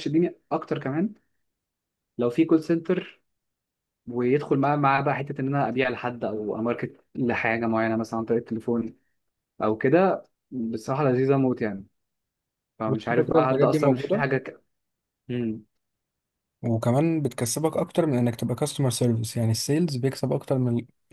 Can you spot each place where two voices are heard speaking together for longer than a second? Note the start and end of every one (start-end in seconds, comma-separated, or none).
12.9-14.3